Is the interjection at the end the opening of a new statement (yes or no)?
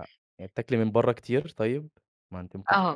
yes